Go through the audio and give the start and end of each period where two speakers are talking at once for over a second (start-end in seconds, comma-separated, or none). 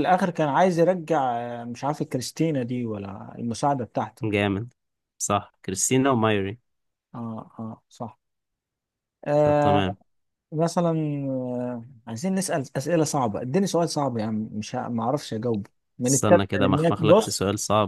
16.1-17.4